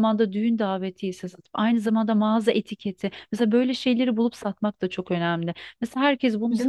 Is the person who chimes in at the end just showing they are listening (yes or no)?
yes